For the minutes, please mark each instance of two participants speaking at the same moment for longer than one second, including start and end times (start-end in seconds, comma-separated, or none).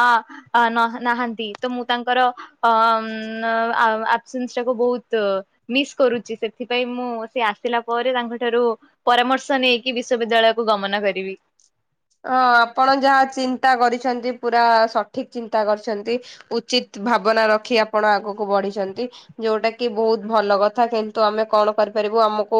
none